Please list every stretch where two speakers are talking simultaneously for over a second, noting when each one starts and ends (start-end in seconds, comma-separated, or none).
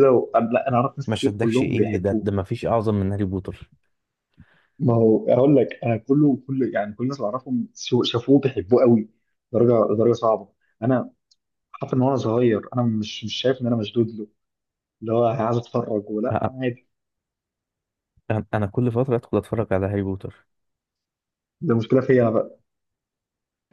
1.1-2.3